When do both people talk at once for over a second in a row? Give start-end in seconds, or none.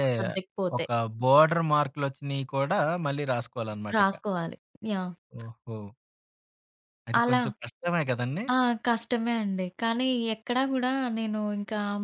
none